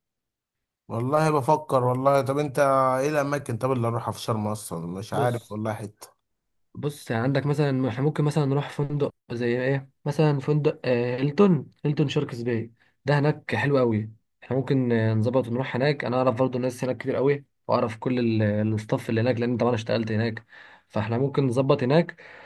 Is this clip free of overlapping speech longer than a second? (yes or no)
yes